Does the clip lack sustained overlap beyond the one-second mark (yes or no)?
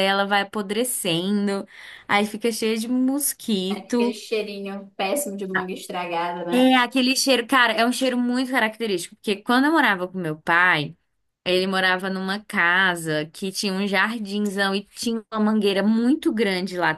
yes